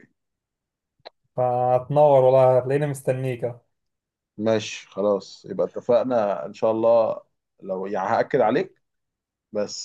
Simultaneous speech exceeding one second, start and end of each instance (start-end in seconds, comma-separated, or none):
none